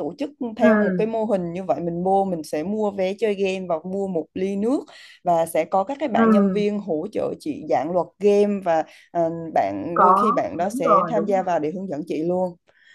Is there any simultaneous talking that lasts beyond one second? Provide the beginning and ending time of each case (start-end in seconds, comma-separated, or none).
9.9-11.6